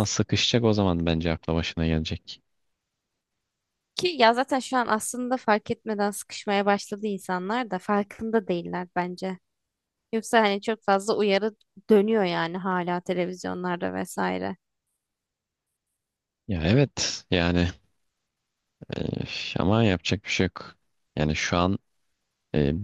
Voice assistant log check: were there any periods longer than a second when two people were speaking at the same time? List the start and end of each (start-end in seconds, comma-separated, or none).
none